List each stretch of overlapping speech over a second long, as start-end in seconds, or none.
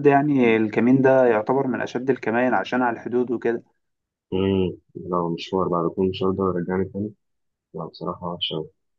none